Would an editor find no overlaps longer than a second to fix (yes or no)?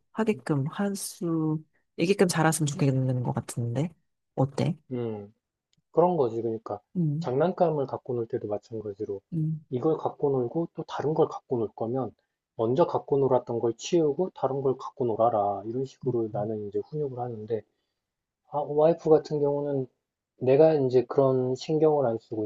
yes